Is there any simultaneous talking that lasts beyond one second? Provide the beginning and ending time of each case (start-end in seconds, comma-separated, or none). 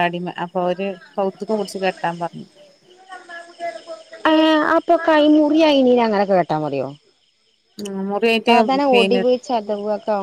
none